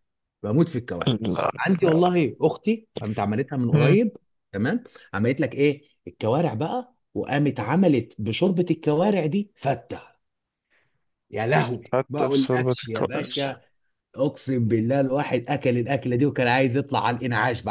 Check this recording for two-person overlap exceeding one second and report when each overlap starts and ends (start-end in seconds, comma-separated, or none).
11.9-13.3